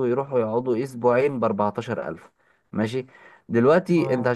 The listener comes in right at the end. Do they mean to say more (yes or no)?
no